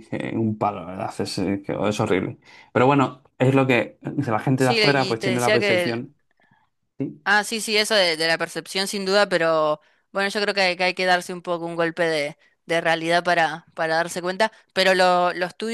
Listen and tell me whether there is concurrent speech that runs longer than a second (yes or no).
yes